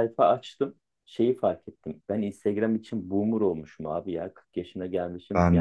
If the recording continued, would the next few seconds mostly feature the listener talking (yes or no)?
no